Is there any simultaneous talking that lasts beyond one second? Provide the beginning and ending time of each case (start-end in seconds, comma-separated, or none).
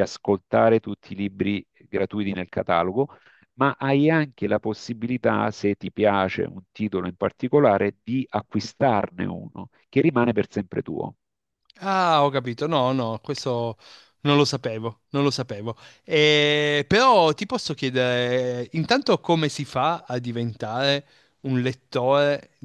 none